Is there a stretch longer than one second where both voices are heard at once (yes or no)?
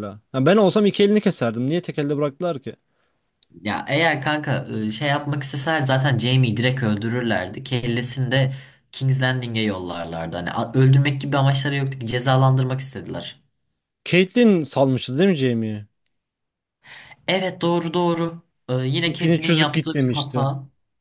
yes